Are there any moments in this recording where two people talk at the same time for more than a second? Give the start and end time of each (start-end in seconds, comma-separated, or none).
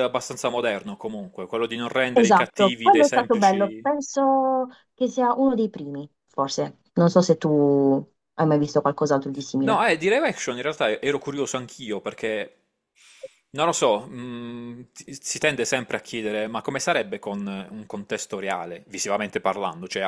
2.1-3.9